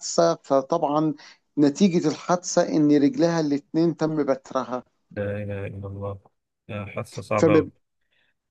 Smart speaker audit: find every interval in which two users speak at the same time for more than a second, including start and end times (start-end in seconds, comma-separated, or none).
none